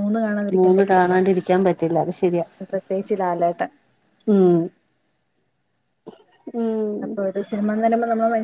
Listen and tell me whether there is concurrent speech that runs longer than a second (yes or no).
no